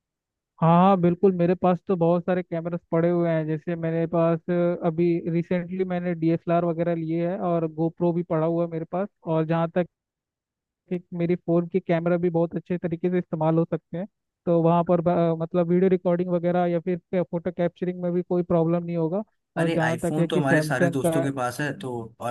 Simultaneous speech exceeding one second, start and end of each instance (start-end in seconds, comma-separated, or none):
19.6-21.3